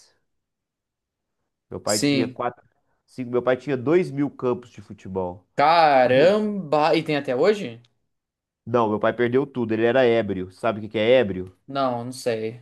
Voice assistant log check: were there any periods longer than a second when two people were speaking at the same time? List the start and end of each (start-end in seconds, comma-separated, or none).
none